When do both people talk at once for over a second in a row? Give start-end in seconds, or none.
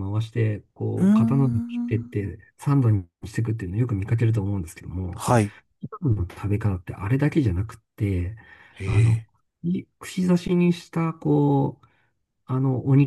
0.9-2.2